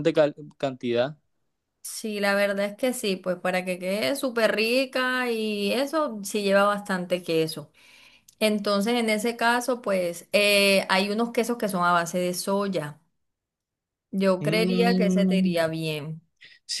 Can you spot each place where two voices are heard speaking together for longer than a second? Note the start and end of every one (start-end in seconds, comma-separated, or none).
14.4-15.6